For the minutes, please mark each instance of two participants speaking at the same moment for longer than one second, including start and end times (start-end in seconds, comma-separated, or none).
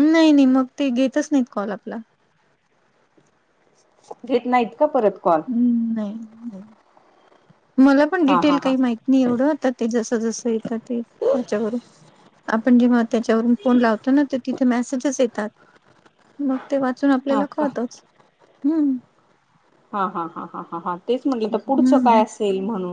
none